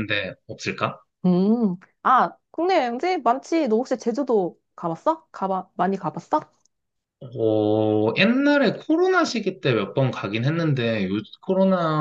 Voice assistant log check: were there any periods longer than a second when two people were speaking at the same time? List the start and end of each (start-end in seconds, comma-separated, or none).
none